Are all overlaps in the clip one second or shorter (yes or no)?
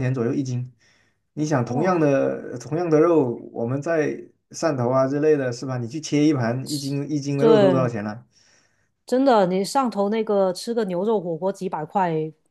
yes